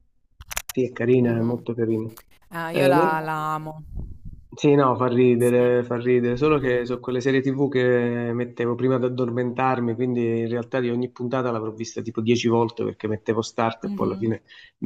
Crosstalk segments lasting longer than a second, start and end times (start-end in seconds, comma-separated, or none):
none